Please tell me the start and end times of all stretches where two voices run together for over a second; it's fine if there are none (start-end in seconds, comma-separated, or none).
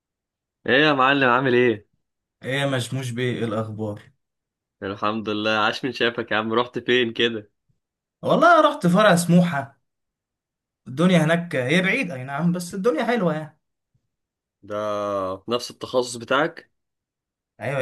none